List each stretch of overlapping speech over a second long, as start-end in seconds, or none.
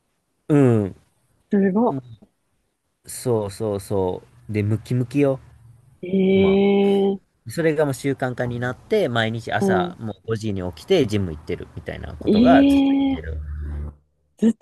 none